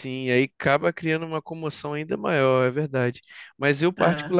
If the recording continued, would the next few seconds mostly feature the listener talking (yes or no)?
no